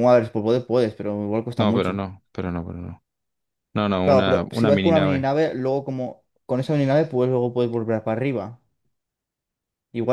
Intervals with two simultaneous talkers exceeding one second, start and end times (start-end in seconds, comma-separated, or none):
4.0-5.3